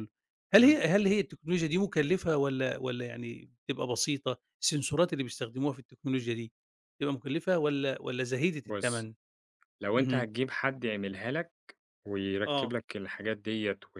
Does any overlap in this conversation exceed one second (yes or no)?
no